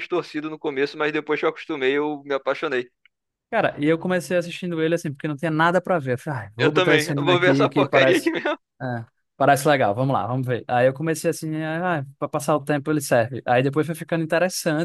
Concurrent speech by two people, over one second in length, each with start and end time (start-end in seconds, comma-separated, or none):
6.6-8.3